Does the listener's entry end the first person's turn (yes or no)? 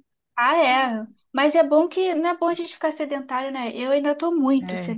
no